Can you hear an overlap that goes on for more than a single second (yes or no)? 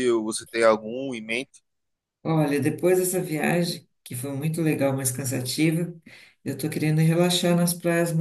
no